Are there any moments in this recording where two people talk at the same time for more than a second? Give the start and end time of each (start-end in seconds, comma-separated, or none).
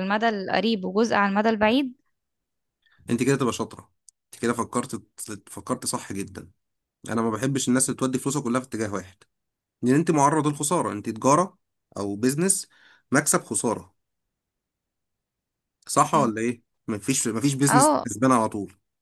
none